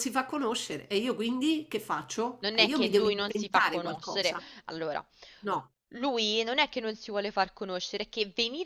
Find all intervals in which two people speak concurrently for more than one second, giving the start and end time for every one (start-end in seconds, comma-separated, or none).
2.4-4.4